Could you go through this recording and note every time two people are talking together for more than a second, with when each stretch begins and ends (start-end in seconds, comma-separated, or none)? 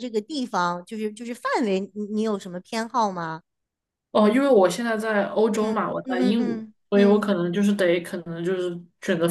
5.5-7.3